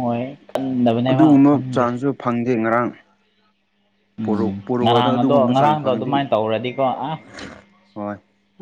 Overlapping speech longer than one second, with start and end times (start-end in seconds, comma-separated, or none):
4.2-6.1